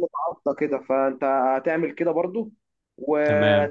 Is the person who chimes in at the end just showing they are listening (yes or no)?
yes